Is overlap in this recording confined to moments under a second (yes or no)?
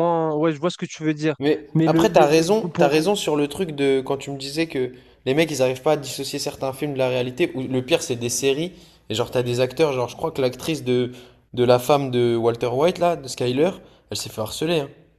no